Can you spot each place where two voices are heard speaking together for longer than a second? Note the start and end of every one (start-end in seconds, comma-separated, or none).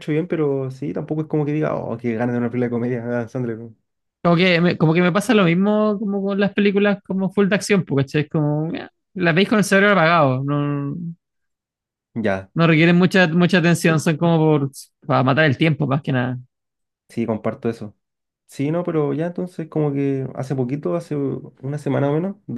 none